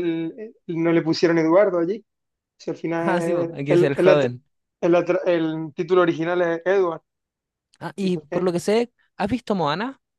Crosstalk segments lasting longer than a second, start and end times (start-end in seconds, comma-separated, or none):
3.0-4.2